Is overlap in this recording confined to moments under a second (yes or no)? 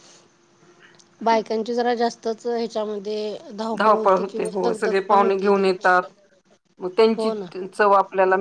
no